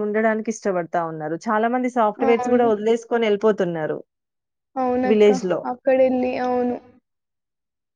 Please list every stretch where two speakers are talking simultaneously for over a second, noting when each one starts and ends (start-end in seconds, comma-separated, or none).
none